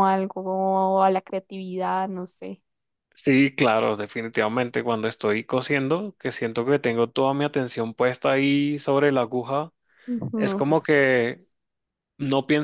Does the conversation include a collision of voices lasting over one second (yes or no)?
no